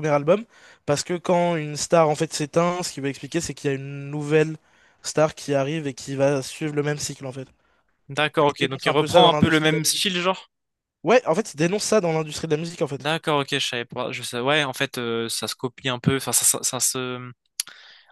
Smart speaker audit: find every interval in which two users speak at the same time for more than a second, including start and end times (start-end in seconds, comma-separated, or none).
8.4-10.1